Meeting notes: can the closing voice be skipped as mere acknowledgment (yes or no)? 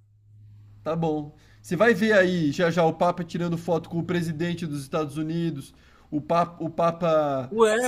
no